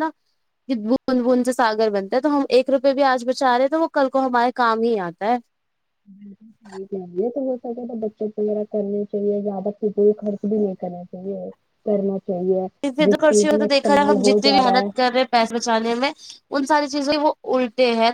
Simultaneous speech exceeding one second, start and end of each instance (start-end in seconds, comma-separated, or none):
13.1-14.9